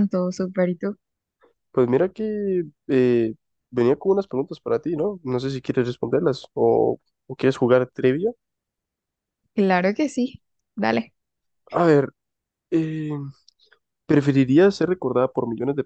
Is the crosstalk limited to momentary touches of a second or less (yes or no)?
yes